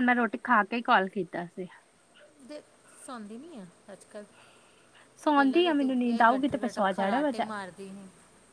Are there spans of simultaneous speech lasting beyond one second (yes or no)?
yes